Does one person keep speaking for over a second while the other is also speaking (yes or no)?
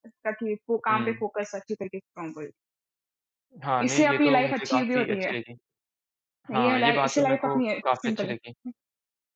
yes